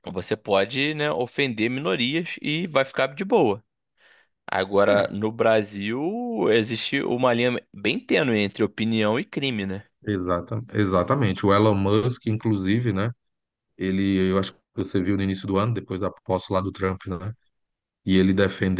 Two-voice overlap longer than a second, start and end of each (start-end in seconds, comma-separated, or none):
none